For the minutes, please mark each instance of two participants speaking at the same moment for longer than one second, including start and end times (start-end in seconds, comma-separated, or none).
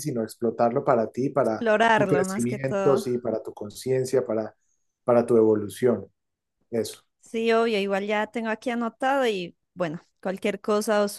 1.4-3.0